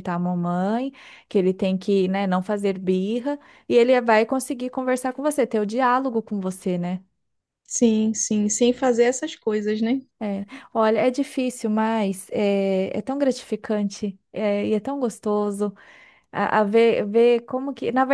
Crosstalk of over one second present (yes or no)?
no